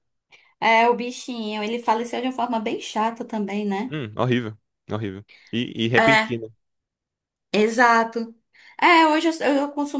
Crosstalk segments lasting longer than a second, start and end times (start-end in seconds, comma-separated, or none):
none